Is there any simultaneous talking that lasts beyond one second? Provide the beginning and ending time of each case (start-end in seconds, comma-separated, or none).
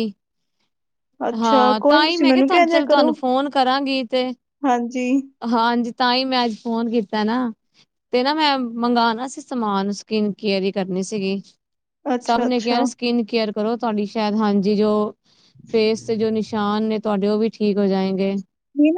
1.4-3.1